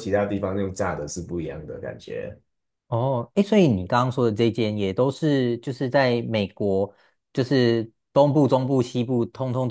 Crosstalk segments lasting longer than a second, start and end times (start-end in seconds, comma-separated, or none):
none